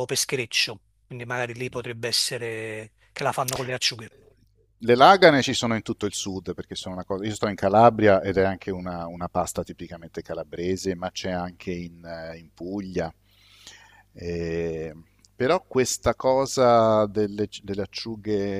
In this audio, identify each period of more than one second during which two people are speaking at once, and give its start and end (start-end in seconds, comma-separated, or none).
none